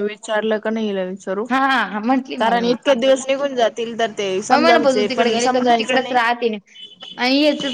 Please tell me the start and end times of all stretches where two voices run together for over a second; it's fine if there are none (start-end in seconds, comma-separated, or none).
4.5-6.2